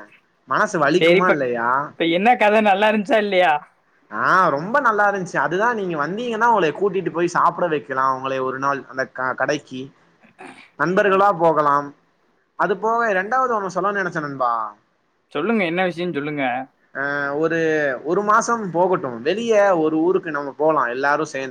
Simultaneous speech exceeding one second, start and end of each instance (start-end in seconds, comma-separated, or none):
none